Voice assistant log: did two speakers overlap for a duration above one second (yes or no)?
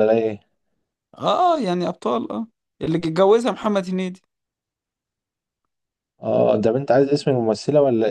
no